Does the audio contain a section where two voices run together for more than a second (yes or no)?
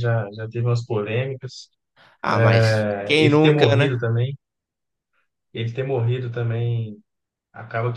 yes